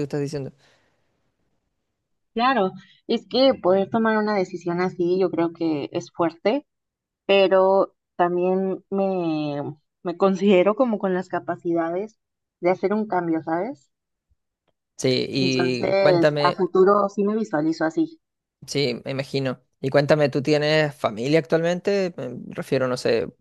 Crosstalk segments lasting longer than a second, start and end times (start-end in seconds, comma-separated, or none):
15.3-16.6